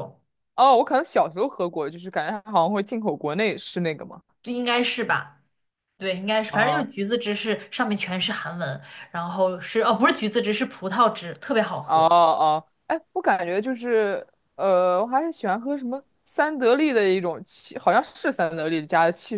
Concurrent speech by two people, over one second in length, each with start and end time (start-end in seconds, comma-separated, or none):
none